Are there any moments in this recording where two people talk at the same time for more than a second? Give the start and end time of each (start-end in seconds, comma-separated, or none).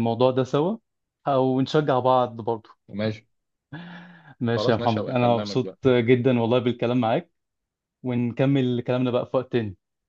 4.6-5.8